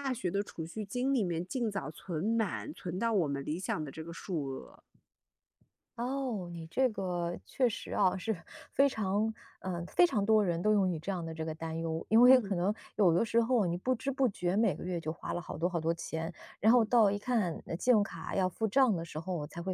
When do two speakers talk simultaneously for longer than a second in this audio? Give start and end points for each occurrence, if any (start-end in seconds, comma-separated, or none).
none